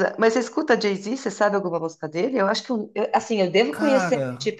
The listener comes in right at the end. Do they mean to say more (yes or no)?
no